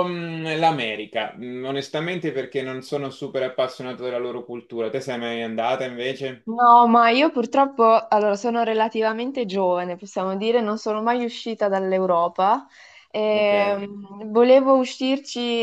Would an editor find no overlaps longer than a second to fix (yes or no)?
yes